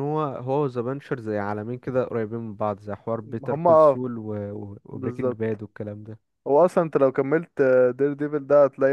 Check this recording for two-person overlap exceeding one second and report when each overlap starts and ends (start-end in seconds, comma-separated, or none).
none